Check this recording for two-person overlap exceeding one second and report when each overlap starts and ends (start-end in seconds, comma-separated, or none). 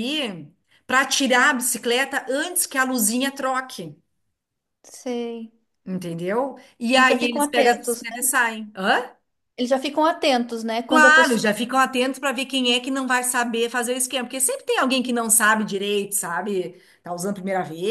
7.0-8.3